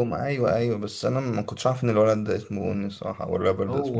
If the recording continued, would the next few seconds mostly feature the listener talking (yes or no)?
yes